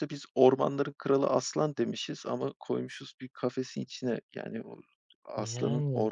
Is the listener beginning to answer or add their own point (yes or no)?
no